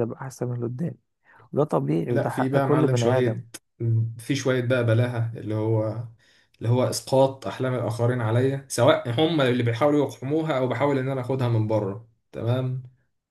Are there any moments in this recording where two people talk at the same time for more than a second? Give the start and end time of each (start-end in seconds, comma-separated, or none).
2.1-3.4